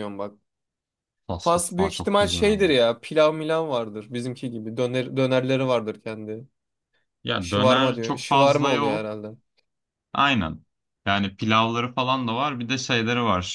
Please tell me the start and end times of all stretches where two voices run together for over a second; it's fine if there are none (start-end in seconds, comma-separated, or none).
1.4-2.7, 7.4-9.2